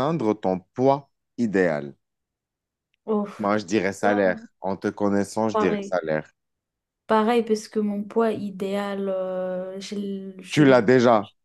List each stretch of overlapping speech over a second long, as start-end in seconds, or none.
none